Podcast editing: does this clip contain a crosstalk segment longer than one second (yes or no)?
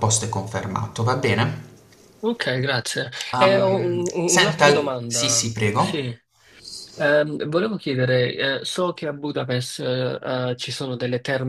yes